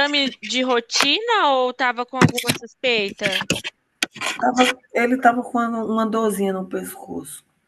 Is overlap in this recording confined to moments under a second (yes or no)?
yes